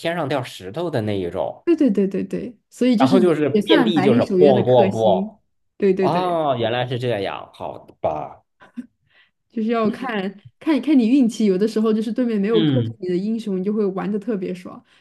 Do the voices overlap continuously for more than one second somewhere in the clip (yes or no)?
yes